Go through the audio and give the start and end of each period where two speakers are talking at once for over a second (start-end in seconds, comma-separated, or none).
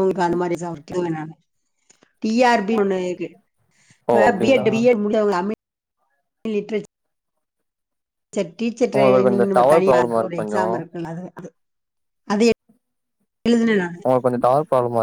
9.0-10.6